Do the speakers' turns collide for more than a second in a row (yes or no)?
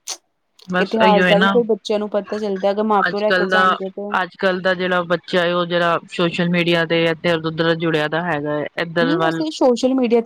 no